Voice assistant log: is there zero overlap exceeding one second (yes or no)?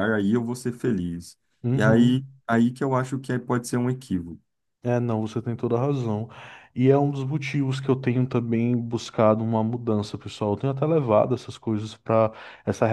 yes